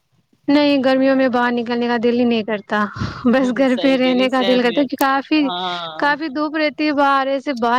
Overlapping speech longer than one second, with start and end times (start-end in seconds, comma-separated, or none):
3.3-4.8